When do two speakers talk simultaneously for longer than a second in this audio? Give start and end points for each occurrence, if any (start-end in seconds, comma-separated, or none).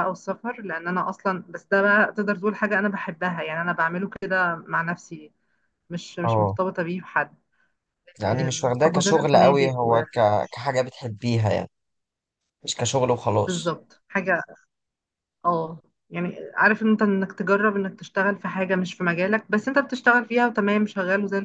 8.2-10.0